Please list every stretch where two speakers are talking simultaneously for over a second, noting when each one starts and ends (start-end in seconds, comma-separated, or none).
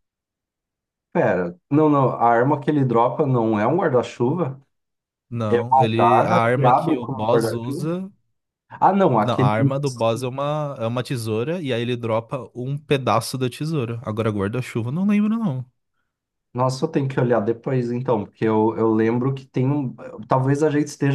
5.5-7.9